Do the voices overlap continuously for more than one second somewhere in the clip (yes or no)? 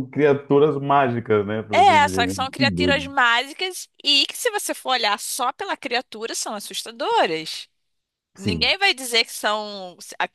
yes